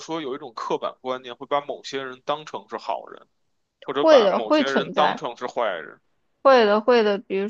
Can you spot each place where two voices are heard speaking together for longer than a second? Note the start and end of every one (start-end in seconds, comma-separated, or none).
4.0-5.2